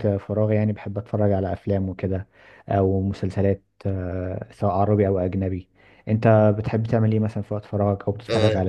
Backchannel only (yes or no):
no